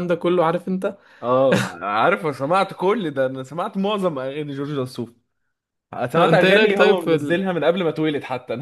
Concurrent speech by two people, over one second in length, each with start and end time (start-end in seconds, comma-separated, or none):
6.2-7.5